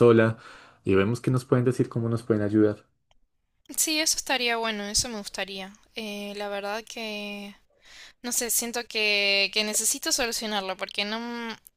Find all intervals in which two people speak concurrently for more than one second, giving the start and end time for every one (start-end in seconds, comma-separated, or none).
none